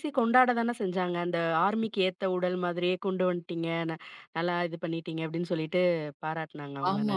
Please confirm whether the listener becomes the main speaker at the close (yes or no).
yes